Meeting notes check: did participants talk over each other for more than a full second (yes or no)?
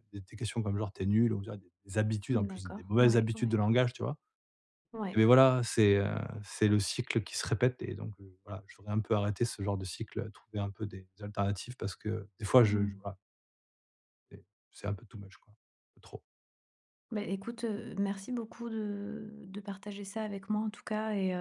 yes